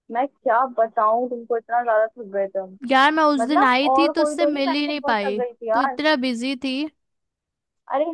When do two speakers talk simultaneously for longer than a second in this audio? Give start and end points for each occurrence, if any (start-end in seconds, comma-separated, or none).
3.4-6.0